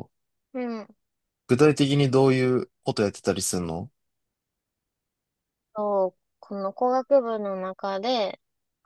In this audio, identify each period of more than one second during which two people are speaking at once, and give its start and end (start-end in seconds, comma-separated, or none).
none